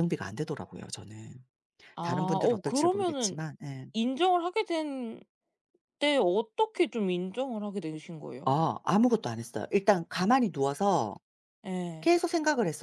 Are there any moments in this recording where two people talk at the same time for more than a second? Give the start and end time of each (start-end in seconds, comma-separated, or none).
2.0-3.4